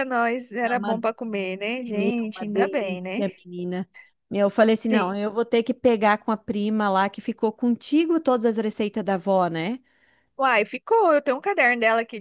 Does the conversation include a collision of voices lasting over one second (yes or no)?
yes